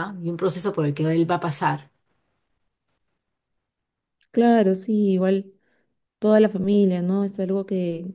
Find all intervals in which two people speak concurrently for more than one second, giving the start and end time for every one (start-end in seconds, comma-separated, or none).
none